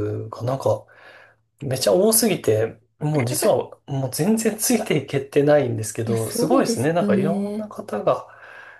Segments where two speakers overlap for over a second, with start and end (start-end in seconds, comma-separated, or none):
6.0-7.7